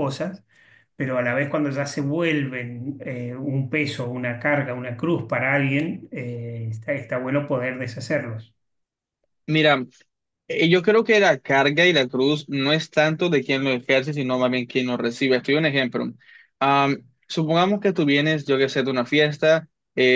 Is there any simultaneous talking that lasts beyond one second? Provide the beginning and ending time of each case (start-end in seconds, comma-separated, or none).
none